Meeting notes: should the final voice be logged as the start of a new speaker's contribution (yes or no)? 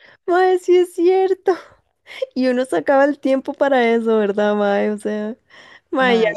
no